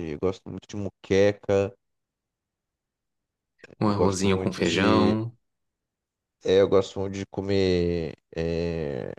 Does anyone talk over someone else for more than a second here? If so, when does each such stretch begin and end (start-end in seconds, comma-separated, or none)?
3.9-5.2